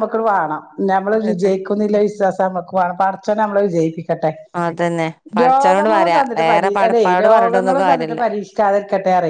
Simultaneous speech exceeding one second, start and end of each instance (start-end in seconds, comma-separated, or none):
5.4-8.2